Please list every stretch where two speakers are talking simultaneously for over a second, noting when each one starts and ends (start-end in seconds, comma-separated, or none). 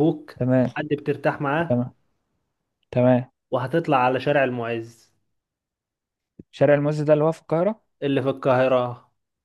none